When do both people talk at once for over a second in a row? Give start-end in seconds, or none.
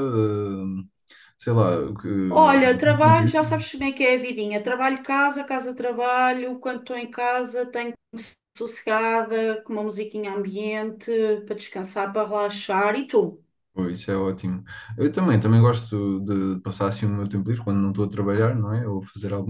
none